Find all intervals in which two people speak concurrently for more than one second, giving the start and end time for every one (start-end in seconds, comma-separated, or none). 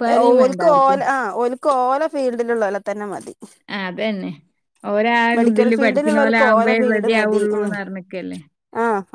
5.4-7.7